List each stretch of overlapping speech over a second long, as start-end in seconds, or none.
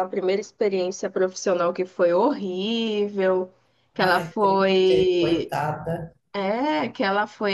4.1-5.6